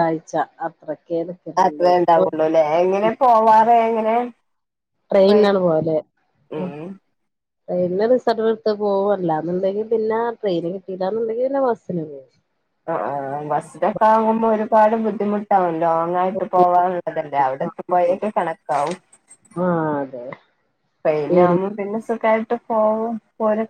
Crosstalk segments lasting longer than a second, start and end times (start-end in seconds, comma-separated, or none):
none